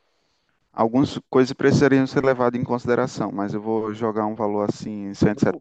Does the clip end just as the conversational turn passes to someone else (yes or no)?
yes